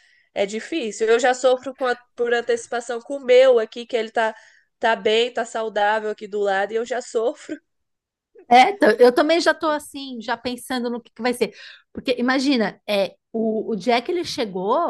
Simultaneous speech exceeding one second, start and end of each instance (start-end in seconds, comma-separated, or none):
none